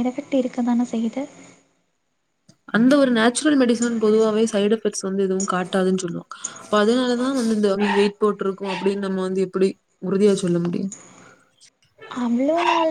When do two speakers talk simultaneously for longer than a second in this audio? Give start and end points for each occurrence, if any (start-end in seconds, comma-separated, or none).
none